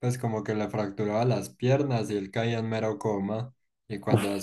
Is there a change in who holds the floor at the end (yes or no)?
no